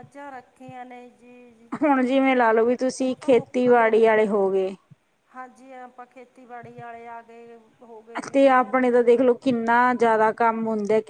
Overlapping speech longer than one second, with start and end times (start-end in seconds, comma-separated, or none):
3.0-4.3